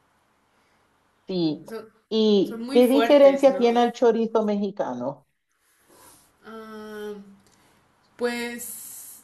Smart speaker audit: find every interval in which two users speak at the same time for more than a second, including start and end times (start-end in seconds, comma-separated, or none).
2.4-3.8